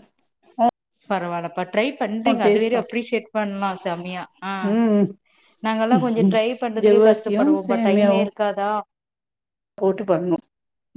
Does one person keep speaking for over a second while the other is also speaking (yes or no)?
yes